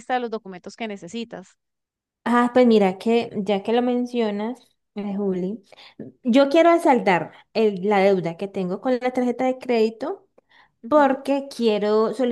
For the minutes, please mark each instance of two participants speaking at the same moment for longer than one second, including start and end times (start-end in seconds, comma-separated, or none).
none